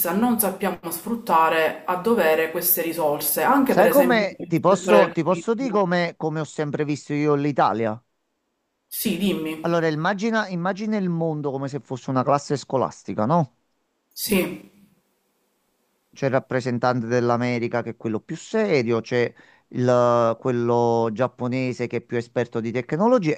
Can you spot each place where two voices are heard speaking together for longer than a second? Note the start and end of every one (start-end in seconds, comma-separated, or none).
3.6-5.8